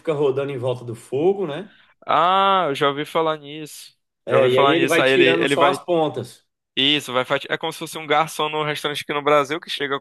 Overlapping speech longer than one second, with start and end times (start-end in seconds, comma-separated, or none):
4.2-5.8